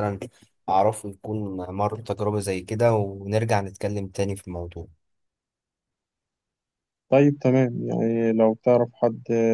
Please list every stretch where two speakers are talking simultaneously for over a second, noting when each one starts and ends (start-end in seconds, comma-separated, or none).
none